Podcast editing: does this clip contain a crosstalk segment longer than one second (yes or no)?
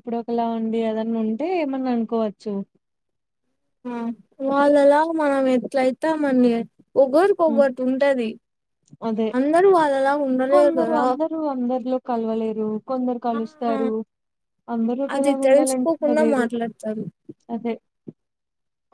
yes